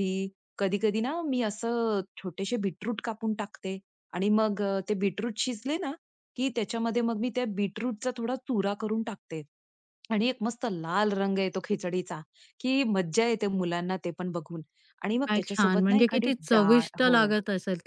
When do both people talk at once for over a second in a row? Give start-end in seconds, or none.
15.3-17.1